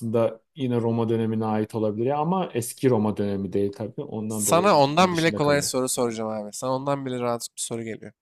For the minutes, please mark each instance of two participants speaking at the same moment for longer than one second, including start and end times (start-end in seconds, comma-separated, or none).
4.3-5.7